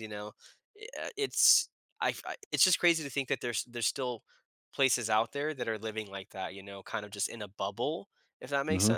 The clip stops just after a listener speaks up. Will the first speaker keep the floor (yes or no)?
no